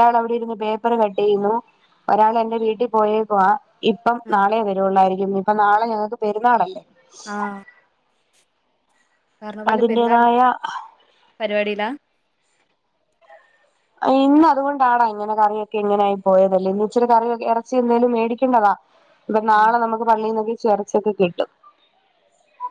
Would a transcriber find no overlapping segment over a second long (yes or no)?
yes